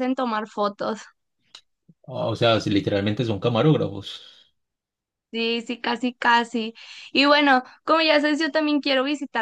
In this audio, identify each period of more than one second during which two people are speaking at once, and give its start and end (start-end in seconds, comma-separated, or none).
none